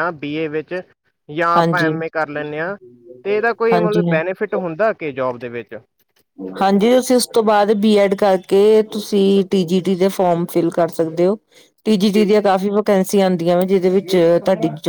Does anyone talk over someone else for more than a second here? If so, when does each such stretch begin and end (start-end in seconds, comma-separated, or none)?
none